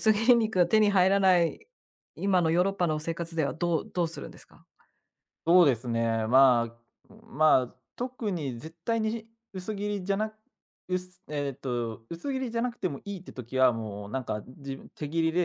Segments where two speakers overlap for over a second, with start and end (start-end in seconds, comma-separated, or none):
none